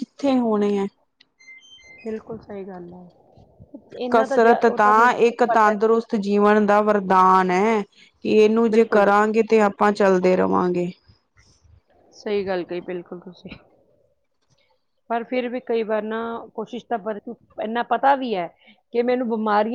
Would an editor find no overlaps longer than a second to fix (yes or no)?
yes